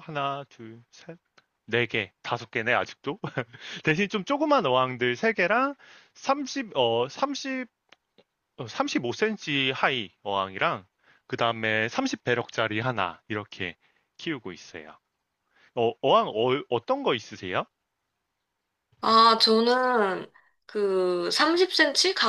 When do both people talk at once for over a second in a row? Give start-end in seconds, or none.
none